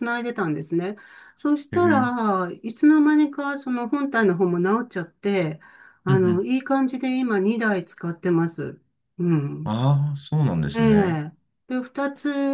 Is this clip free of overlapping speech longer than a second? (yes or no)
yes